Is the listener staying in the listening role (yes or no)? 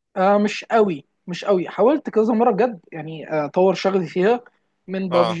yes